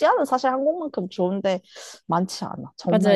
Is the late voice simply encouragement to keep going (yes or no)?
no